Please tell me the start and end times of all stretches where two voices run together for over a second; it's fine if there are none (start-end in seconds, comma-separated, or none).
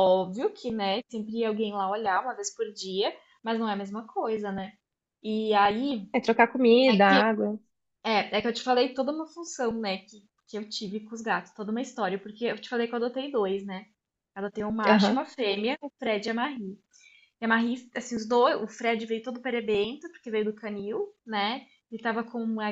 none